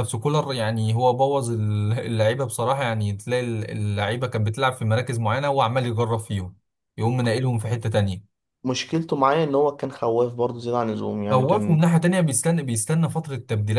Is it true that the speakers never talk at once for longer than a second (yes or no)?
yes